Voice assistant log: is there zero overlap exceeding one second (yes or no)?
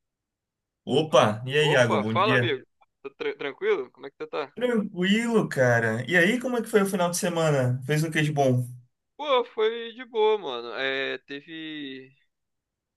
no